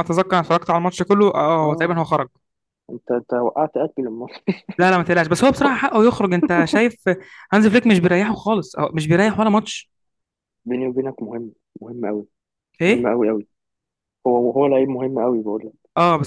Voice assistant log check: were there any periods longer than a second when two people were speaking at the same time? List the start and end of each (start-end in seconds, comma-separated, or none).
none